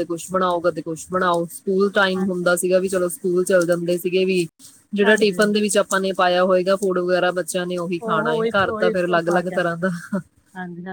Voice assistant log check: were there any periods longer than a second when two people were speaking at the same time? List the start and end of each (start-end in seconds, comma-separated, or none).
8.0-9.9